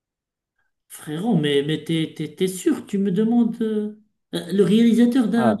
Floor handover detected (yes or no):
yes